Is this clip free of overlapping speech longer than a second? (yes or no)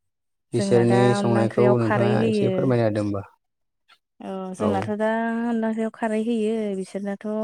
no